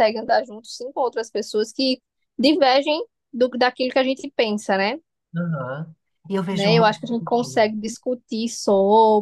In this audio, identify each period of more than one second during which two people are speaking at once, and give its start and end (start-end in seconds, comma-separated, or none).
6.5-7.8